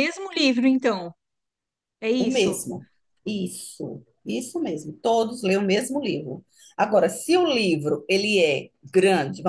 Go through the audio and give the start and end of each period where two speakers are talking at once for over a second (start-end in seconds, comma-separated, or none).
none